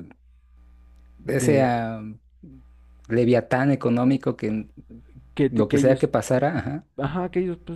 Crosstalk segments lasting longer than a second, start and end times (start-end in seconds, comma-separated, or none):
none